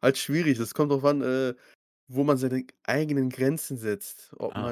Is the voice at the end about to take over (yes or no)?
no